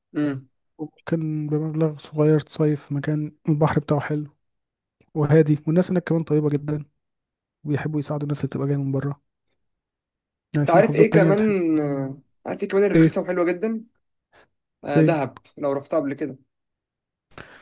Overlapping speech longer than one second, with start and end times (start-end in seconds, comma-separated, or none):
10.7-12.1